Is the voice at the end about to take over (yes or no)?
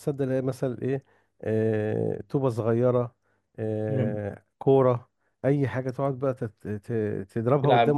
no